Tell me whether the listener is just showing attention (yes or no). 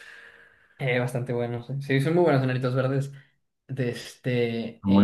yes